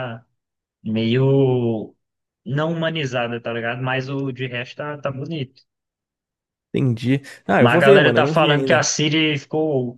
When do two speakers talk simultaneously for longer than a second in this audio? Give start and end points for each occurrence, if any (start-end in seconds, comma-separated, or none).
7.6-8.8